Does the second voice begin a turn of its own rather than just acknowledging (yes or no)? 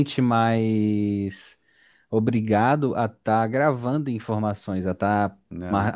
no